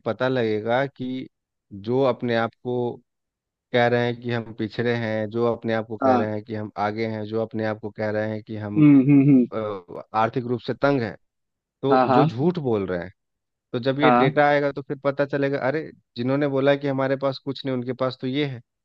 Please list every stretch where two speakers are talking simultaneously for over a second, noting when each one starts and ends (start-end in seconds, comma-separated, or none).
none